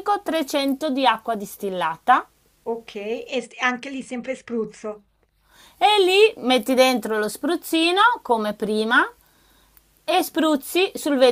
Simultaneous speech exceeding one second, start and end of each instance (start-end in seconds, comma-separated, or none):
none